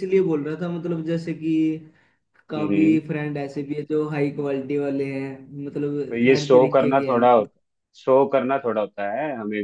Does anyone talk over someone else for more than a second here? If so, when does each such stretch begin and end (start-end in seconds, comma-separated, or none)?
6.1-7.5